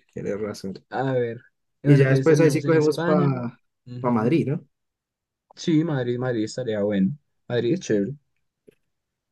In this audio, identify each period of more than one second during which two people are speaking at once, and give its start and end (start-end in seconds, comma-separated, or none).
1.8-3.3